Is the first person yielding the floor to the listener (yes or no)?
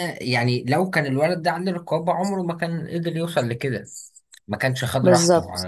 yes